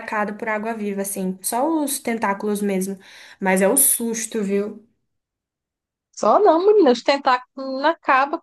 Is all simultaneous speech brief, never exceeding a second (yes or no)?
yes